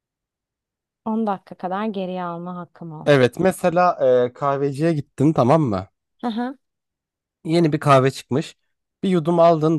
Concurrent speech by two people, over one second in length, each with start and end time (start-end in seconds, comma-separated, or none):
none